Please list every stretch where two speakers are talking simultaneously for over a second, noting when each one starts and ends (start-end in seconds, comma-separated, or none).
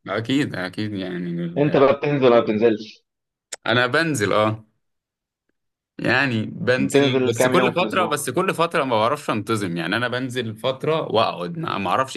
6.8-8.2